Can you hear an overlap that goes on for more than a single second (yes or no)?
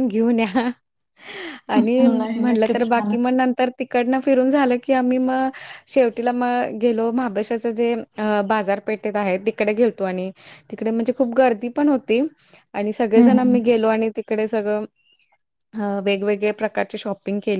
yes